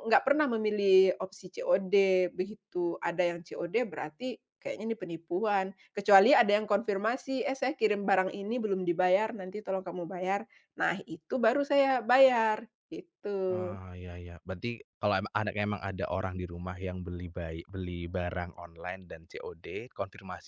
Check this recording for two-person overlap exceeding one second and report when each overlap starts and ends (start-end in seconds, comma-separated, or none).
none